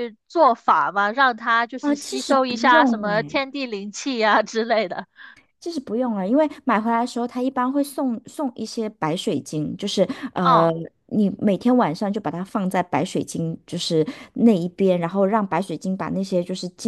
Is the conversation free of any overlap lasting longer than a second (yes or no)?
no